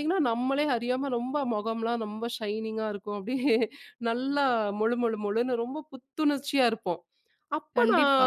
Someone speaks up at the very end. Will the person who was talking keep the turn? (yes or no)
yes